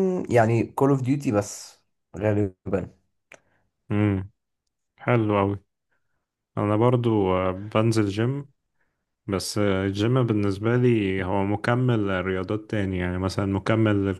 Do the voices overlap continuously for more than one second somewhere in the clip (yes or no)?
no